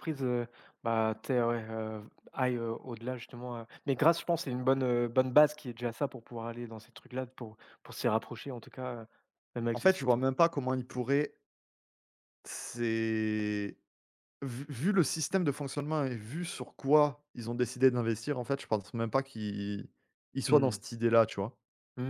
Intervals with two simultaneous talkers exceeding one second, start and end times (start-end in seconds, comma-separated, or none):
none